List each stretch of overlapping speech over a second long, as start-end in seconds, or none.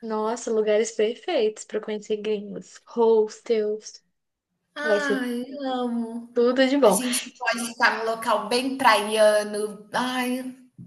none